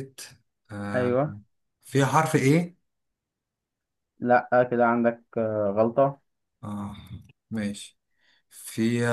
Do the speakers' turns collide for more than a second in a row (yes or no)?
no